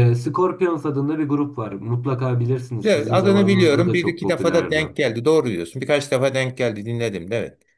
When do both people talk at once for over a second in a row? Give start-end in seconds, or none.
2.8-4.8